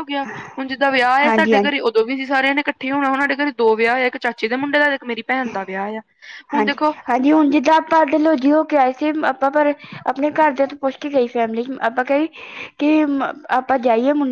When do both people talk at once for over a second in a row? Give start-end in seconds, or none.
none